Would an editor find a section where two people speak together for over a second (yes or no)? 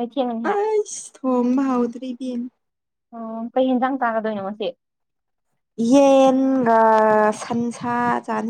no